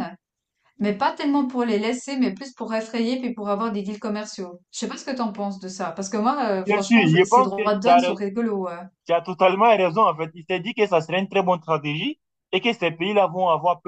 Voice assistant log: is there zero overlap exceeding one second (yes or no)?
no